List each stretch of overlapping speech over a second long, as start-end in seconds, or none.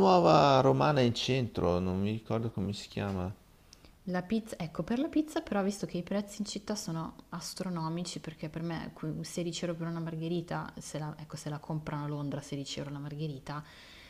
none